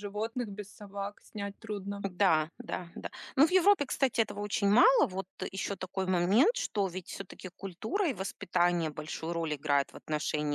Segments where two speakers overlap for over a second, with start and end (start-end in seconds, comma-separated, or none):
none